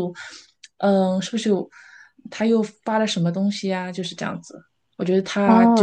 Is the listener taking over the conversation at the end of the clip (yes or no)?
no